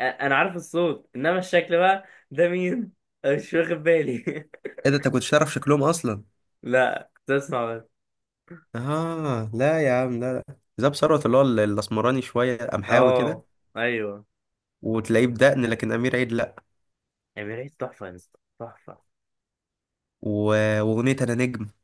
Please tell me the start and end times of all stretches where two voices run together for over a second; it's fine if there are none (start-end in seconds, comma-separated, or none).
none